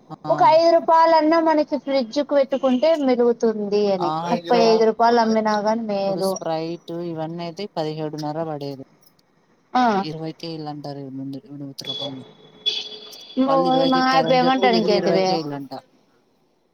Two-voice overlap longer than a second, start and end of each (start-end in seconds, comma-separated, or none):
13.5-15.3